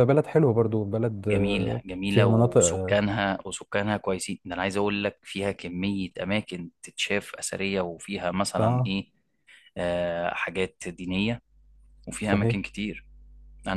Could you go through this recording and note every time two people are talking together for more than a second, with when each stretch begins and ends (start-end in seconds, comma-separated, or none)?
1.3-3.0